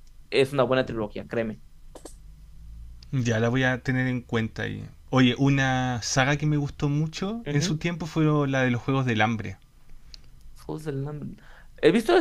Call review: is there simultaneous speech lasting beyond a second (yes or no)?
no